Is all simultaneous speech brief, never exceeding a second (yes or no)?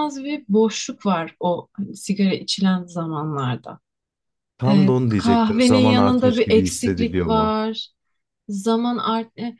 no